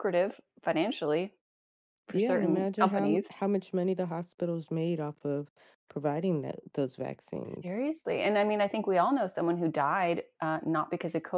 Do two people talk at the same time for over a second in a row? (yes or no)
yes